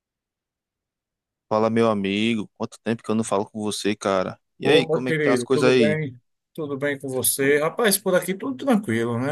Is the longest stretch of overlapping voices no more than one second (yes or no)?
no